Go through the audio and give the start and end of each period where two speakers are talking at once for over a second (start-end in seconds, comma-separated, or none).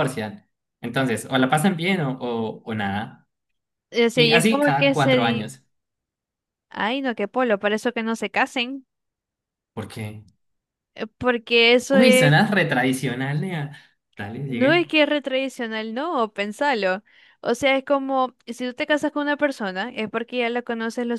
4.1-5.5